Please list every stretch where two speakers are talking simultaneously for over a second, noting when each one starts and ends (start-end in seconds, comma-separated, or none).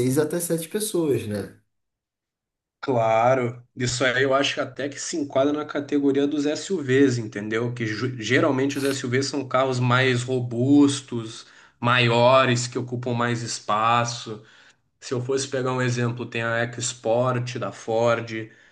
none